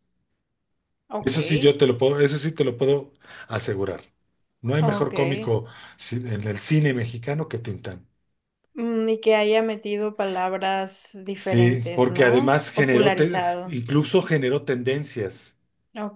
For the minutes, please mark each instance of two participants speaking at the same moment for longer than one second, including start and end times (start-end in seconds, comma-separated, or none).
11.4-13.8